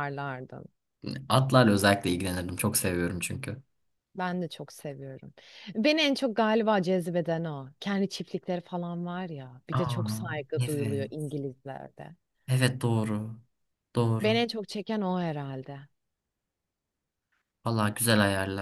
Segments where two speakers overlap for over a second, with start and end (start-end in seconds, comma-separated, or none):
9.7-11.3